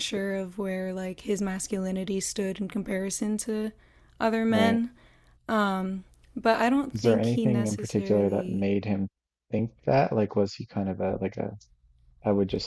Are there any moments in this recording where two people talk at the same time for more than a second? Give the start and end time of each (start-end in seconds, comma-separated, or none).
6.9-8.7